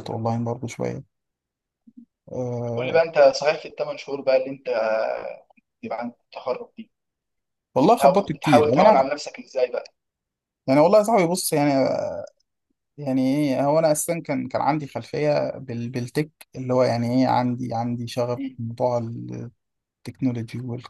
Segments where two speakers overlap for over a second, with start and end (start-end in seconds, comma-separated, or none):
7.8-9.1